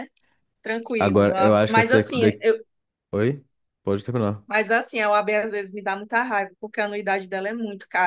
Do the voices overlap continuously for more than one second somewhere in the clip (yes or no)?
yes